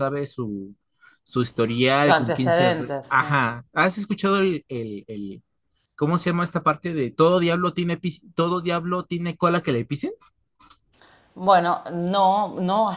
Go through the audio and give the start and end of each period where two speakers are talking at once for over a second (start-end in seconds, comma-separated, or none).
1.9-3.4